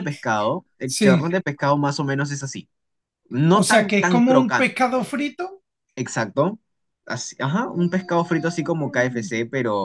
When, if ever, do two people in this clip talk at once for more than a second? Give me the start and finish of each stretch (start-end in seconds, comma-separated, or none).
3.5-4.9